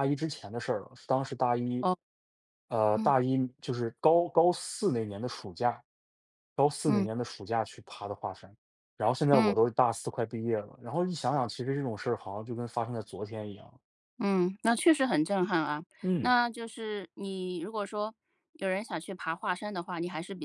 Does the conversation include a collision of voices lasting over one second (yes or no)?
no